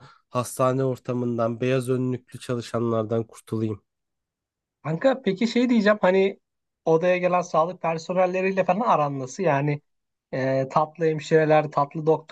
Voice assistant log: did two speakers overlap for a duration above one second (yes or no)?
no